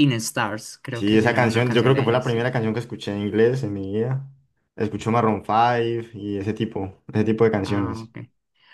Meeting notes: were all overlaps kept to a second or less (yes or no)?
no